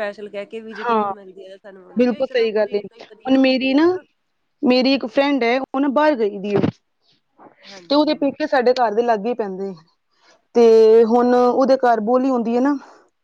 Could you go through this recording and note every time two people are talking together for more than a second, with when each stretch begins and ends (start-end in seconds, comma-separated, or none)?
2.0-3.8